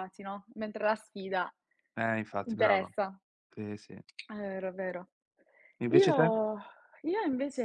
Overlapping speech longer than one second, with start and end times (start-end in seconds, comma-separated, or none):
none